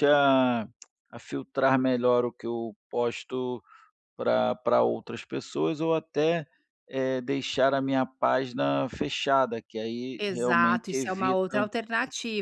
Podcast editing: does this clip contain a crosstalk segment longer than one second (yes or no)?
yes